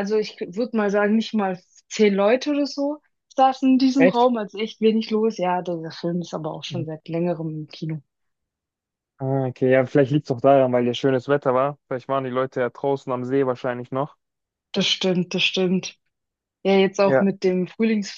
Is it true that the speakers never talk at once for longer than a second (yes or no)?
yes